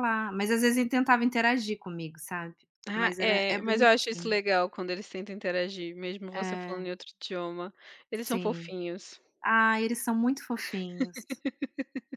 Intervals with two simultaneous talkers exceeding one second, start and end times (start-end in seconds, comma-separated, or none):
3.0-4.4